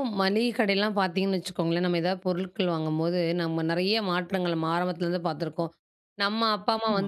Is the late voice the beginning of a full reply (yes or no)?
no